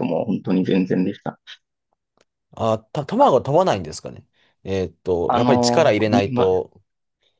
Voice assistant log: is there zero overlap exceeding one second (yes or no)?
no